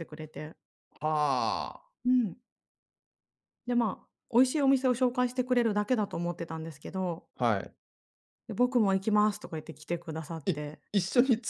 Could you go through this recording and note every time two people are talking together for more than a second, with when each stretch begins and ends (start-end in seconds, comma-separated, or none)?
none